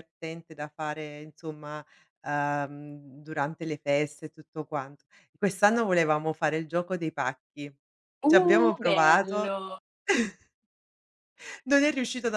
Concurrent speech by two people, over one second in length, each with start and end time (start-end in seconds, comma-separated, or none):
8.2-9.6